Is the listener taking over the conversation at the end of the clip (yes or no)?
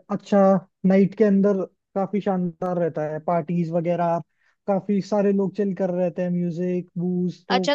yes